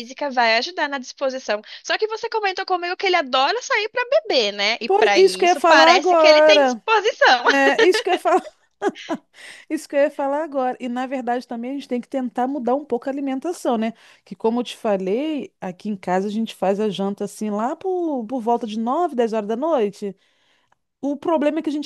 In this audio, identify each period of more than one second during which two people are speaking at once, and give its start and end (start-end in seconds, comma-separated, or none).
4.9-6.8